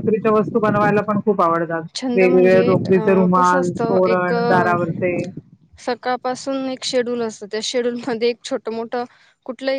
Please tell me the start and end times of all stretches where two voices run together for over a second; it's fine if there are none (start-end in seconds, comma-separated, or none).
2.2-4.3